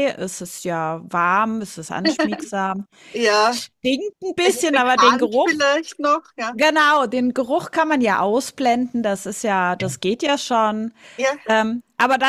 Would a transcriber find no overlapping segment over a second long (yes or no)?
no